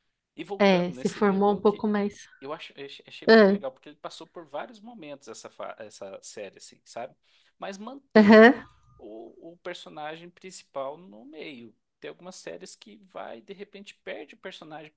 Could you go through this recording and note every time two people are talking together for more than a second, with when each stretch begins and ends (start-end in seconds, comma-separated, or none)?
0.6-1.9